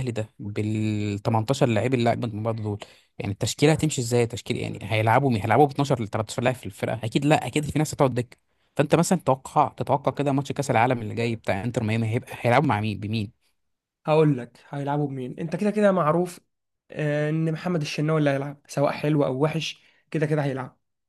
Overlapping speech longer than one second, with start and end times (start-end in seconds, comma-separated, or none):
none